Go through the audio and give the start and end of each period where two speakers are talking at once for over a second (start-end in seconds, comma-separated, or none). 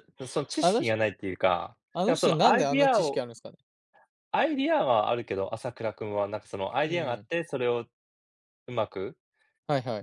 1.9-3.3